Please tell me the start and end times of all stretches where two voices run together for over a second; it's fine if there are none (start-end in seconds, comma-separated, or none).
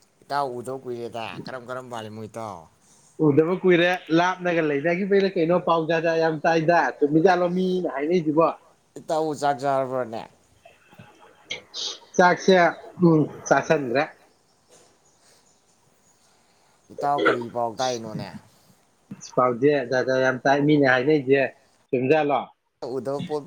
none